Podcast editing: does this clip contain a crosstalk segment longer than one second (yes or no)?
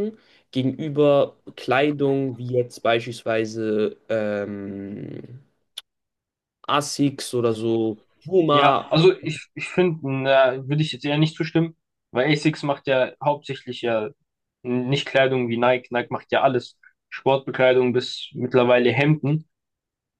no